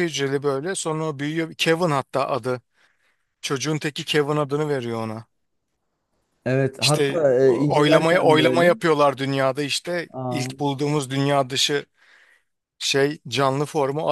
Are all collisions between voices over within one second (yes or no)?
no